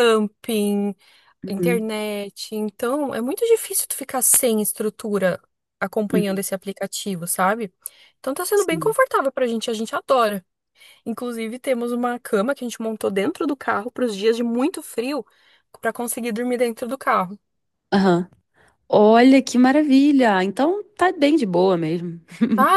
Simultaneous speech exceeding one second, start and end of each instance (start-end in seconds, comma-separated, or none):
none